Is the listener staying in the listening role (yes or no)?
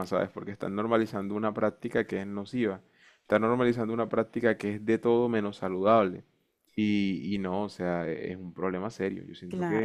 no